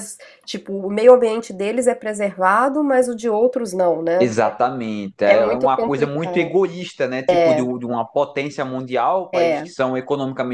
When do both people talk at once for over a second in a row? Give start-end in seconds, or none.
5.2-6.5